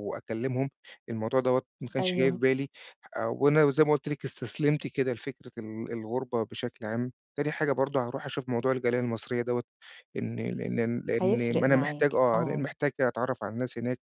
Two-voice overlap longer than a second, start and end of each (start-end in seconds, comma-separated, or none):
11.2-12.7